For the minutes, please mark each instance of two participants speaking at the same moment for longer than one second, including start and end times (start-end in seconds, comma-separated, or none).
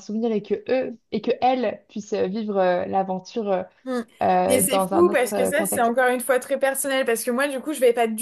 4.5-5.9